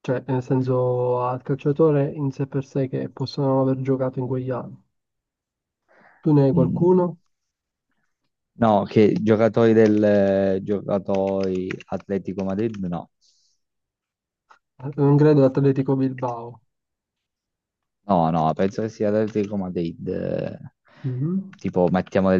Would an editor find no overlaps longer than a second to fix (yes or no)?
yes